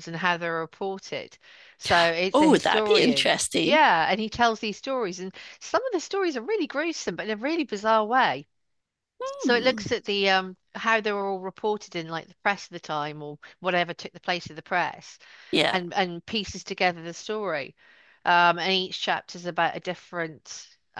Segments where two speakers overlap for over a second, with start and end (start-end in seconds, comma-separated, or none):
2.3-3.8